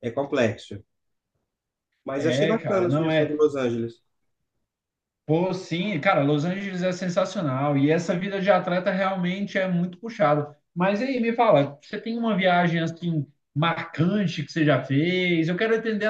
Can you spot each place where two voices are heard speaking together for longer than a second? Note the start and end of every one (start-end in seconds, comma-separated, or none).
2.2-3.5